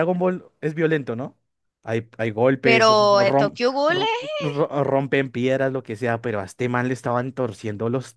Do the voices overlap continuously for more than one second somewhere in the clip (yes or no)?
yes